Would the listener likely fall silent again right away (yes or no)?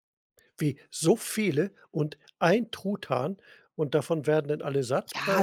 no